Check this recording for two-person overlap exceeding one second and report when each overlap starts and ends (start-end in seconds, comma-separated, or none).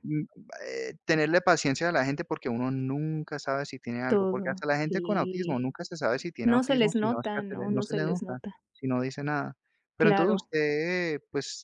4.1-5.7, 6.4-8.6